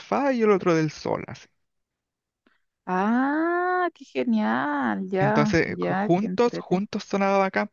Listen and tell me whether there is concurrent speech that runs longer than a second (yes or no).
yes